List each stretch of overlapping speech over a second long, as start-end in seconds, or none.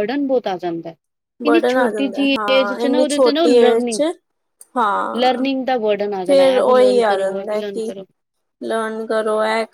1.4-4.0, 6.3-7.9